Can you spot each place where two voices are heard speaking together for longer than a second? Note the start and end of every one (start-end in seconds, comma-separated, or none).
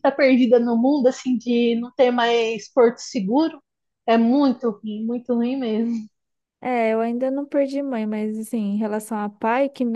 none